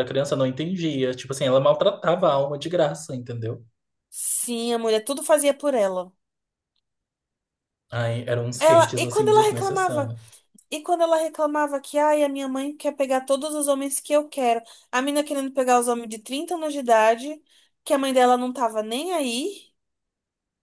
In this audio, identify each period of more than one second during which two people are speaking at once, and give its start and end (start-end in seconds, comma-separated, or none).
8.6-10.1